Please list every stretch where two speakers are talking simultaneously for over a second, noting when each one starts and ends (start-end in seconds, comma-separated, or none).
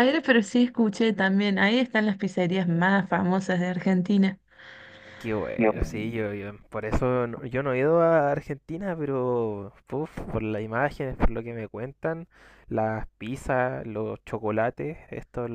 none